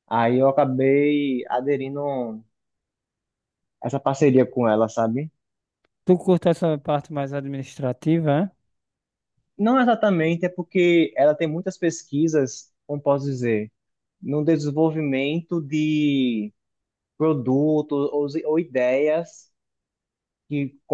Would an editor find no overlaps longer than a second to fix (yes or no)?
yes